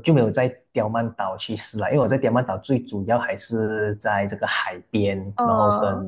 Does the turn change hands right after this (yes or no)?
no